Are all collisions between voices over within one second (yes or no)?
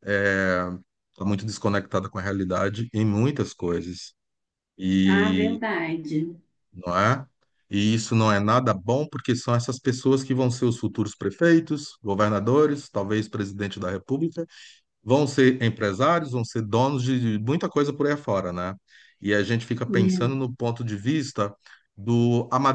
yes